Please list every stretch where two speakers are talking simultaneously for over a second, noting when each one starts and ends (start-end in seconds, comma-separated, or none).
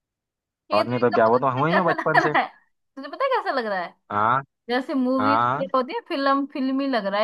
0.7-2.3